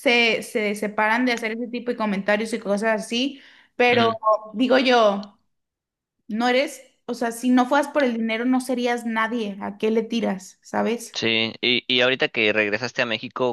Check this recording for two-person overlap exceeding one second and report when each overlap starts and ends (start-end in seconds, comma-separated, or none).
none